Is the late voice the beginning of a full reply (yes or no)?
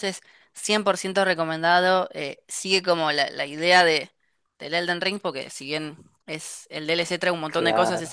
no